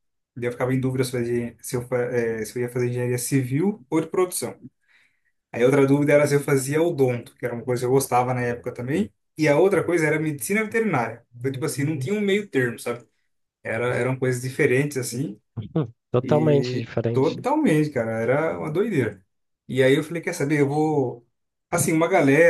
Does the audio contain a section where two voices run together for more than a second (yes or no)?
yes